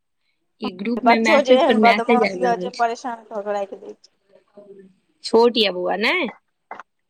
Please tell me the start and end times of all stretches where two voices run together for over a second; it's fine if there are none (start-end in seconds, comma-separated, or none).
1.1-3.8